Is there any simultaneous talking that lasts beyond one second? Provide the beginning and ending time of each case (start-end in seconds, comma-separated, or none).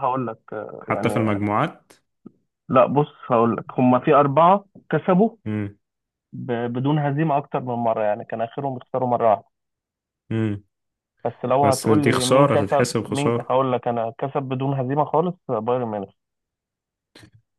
11.6-13.5